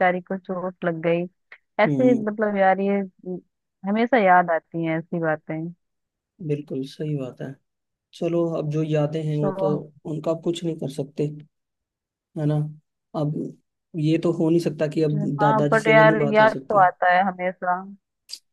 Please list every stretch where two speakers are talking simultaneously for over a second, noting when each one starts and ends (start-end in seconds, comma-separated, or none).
15.1-16.9